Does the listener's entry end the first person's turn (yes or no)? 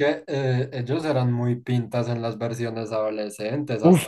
yes